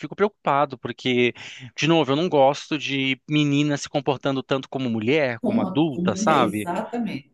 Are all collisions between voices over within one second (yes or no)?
no